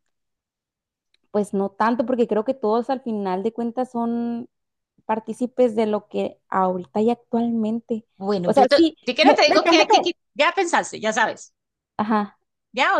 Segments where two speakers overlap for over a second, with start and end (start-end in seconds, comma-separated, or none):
8.4-10.1